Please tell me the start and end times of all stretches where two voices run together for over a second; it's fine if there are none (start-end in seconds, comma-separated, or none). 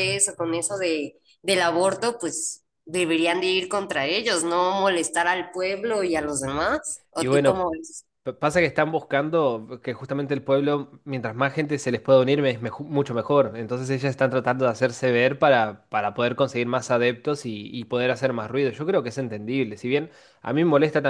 none